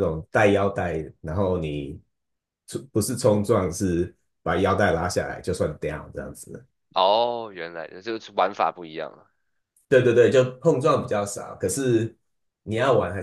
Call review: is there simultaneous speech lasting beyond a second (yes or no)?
no